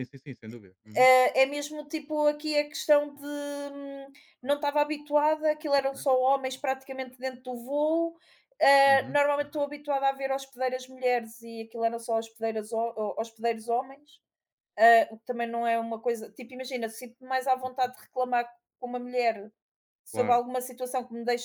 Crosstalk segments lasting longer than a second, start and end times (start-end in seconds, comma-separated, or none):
none